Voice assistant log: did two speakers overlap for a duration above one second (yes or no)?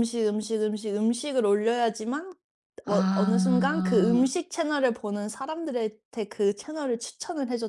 yes